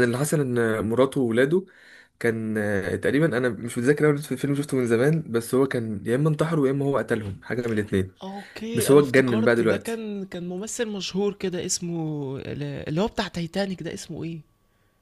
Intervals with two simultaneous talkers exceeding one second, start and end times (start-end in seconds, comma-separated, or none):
8.7-10.0